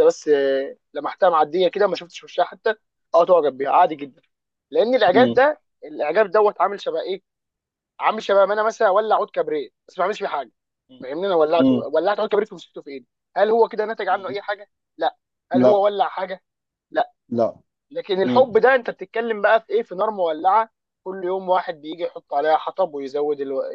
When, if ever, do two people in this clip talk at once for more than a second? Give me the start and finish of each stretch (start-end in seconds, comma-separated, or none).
none